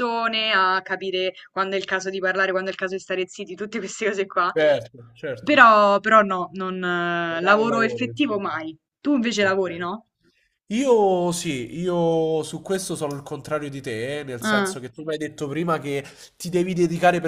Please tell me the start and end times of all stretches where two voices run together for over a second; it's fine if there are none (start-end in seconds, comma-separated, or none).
7.3-8.5